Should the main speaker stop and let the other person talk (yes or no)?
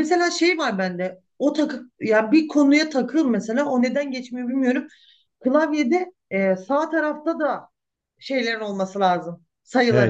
yes